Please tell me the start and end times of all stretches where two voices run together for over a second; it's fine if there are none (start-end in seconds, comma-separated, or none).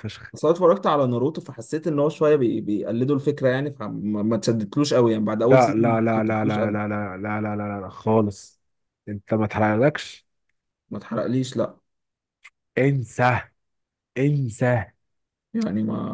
5.5-6.8